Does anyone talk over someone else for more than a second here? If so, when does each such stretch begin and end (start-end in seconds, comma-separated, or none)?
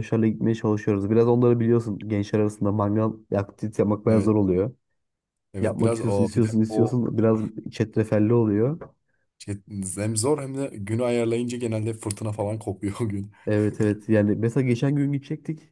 5.6-7.0